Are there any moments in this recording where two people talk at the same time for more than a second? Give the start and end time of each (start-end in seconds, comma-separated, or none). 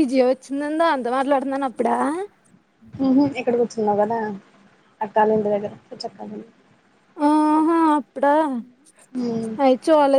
none